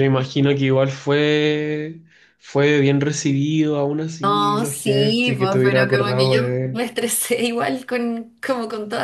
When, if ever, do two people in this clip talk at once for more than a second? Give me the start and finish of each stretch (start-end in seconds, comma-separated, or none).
4.2-6.9